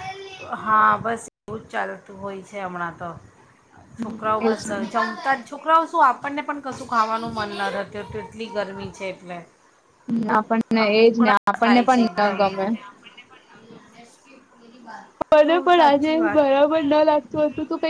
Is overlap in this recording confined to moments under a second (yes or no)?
no